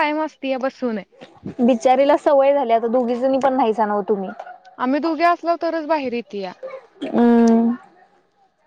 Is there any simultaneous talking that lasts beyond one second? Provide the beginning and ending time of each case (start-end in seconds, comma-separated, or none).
none